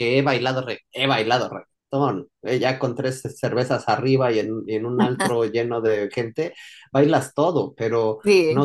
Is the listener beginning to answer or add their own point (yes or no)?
no